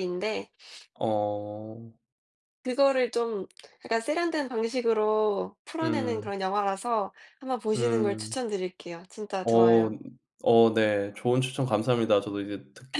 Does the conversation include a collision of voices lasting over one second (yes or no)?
no